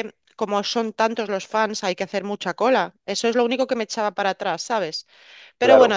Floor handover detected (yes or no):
yes